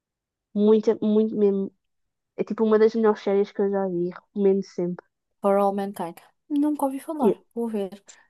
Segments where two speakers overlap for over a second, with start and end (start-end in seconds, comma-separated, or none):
none